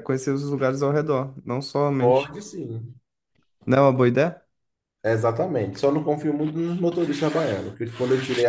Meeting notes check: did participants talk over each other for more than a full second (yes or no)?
no